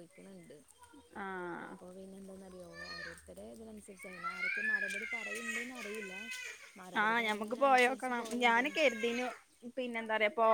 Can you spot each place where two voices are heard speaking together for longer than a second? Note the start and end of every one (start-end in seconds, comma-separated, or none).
7.0-8.7